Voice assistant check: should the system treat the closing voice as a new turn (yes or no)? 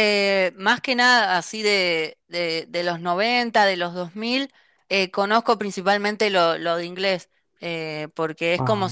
no